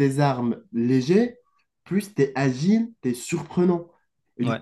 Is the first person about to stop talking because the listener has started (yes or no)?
no